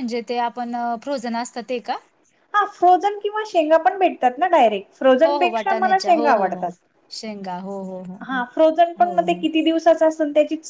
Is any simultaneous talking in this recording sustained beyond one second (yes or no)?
yes